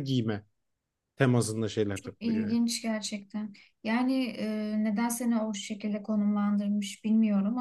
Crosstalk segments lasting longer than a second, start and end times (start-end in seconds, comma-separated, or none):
none